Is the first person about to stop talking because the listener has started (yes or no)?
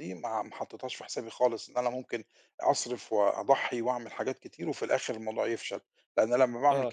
no